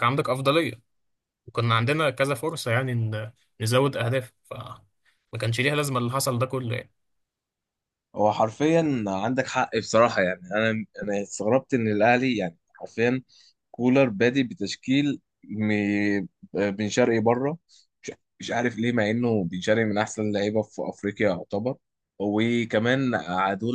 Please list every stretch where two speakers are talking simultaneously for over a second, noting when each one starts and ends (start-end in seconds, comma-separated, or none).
none